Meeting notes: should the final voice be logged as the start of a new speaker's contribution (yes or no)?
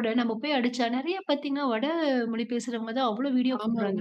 no